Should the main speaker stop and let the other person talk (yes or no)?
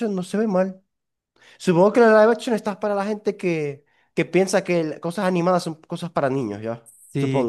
yes